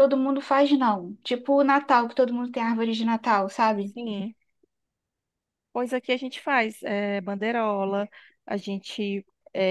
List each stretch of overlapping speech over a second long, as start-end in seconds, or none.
none